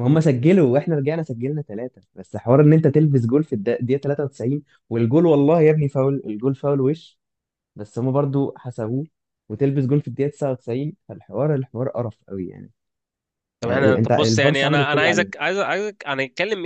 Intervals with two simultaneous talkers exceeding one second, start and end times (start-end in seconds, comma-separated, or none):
13.6-15.3